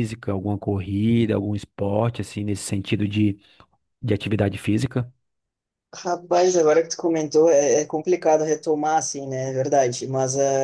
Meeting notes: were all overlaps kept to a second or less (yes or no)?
yes